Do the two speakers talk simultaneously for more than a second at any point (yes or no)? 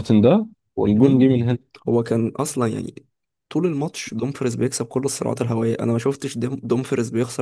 no